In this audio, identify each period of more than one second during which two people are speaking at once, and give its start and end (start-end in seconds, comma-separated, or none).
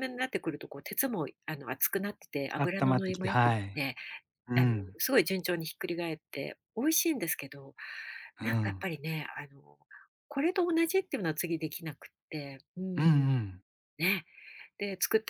2.5-3.8